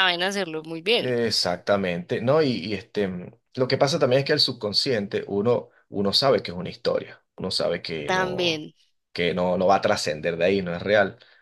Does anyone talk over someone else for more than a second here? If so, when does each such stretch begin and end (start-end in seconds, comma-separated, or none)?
none